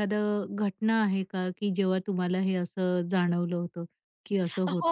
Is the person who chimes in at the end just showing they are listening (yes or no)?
no